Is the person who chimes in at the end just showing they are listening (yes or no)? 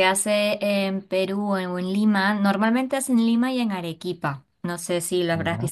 yes